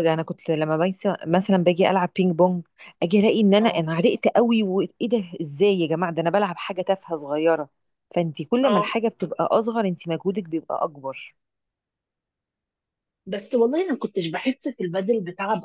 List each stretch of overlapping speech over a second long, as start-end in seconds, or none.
none